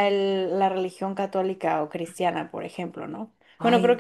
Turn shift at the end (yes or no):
no